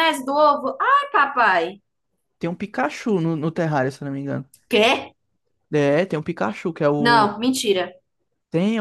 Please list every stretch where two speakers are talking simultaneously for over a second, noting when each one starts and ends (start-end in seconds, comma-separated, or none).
none